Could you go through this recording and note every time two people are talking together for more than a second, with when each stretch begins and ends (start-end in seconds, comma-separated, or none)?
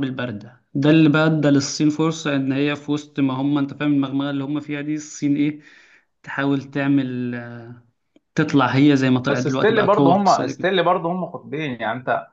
9.2-10.7